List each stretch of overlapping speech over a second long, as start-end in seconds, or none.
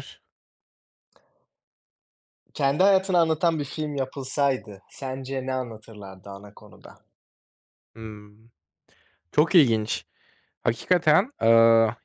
none